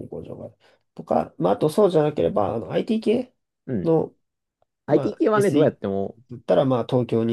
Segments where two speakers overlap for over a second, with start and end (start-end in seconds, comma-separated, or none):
4.9-6.2